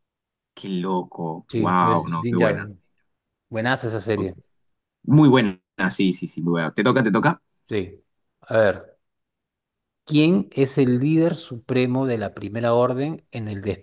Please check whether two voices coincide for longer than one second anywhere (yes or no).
yes